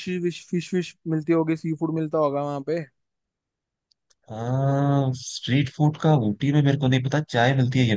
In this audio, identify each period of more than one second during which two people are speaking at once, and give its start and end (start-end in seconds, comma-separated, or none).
none